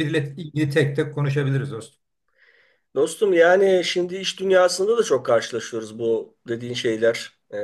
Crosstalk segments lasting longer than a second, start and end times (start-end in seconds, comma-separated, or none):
none